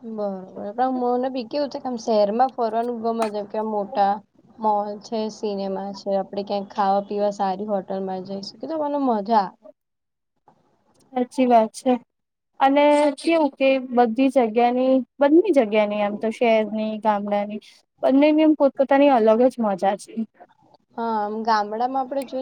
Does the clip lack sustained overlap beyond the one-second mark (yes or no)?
yes